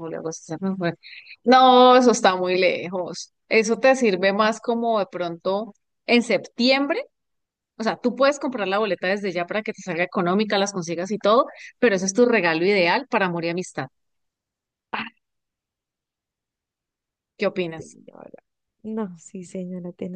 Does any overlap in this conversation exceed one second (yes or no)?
no